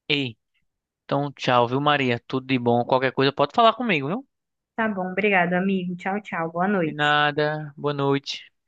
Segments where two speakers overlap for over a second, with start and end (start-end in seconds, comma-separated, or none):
none